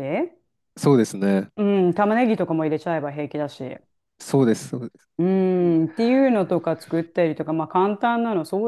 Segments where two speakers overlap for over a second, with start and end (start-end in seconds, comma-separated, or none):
none